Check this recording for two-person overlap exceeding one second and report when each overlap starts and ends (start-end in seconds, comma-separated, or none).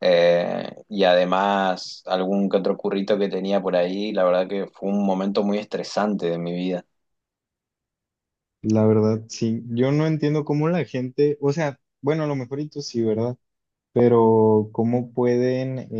none